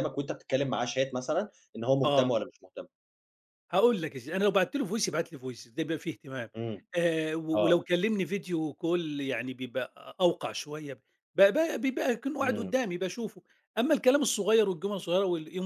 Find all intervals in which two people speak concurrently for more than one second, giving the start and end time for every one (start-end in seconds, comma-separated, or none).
none